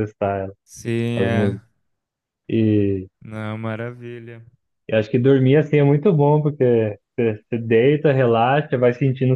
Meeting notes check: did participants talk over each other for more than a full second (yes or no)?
no